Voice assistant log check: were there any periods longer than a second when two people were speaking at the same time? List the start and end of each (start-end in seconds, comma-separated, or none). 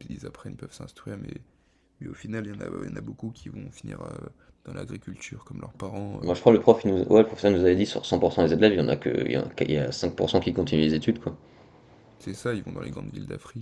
none